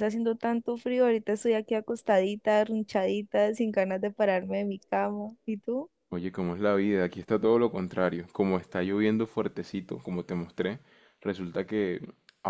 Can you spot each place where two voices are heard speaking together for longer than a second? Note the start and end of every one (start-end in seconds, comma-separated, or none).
none